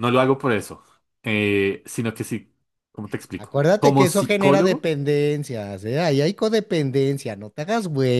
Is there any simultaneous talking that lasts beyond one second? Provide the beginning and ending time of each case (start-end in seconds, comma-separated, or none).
3.4-4.9